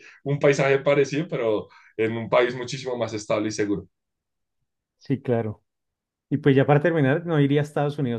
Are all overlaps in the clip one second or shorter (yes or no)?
yes